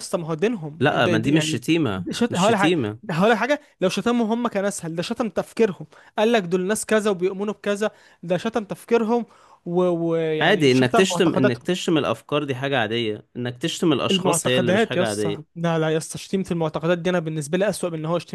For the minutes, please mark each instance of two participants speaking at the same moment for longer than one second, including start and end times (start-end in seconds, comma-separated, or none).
0.8-2.8, 10.4-11.7, 14.1-15.6